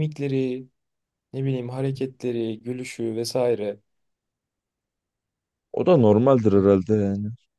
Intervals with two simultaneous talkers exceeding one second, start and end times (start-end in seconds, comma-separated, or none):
none